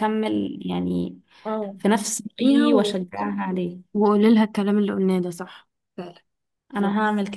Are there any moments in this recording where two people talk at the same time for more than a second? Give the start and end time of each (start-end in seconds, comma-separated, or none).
none